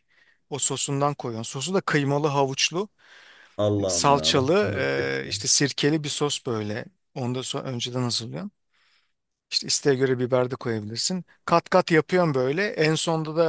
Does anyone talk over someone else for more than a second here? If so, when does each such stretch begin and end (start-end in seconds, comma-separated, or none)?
3.9-5.3